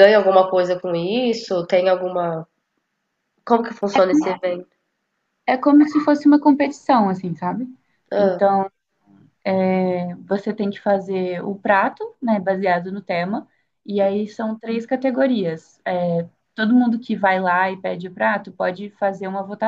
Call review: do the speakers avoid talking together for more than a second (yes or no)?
yes